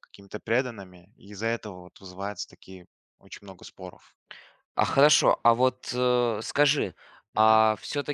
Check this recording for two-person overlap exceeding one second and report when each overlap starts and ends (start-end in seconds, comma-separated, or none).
none